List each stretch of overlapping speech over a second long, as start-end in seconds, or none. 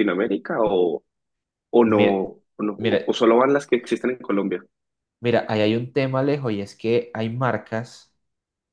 none